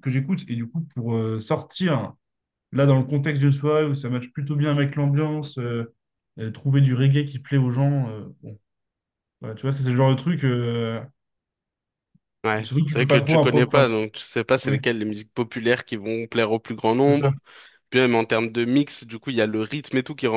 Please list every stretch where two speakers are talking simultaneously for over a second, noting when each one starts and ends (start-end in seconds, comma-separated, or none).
12.6-13.9